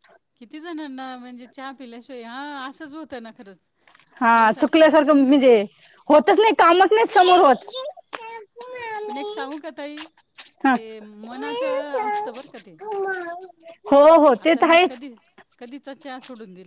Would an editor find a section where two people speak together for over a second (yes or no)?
no